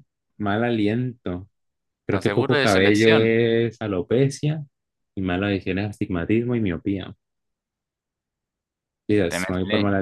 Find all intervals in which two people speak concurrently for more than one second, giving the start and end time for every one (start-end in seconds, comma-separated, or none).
2.1-3.4